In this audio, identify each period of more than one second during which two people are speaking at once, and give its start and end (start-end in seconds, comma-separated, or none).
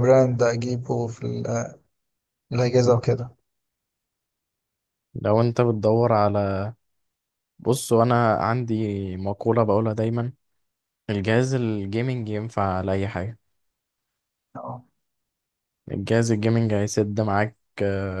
none